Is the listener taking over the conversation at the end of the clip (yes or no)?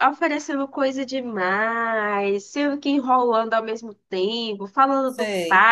no